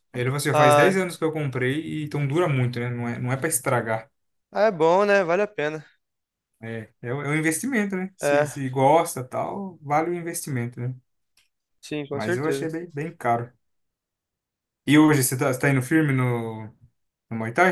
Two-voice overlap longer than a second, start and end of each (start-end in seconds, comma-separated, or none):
none